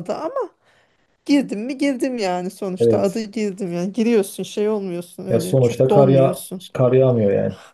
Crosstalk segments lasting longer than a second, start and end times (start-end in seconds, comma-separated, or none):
5.3-6.6